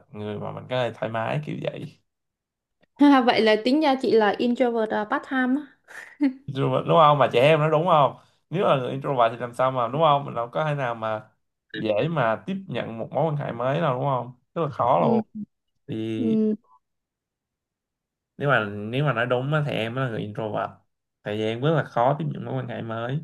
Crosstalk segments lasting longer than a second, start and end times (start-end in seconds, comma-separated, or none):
none